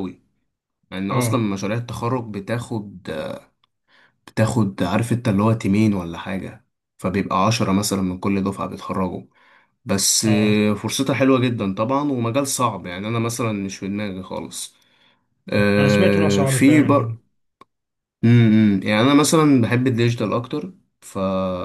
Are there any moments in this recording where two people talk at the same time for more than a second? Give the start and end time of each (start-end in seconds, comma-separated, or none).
15.8-17.2